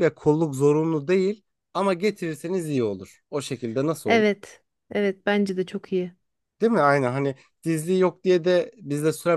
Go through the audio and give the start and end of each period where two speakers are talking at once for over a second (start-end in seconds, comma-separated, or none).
none